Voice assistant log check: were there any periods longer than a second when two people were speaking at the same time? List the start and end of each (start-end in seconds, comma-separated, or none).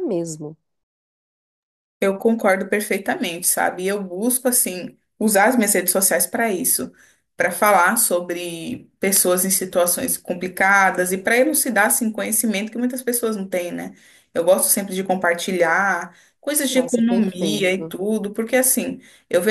16.7-17.9